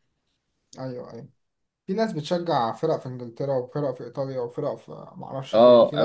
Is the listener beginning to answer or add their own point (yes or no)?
yes